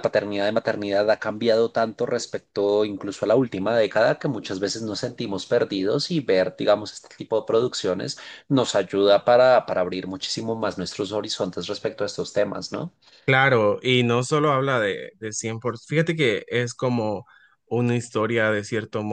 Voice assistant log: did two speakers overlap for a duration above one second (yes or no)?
no